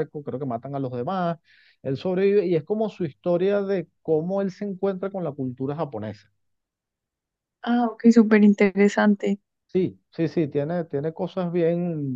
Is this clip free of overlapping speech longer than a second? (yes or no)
yes